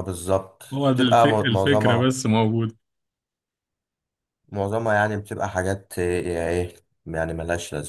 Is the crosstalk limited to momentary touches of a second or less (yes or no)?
no